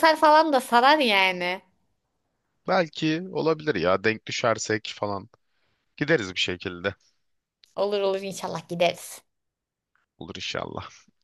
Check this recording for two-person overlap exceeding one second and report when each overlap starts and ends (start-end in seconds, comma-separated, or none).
none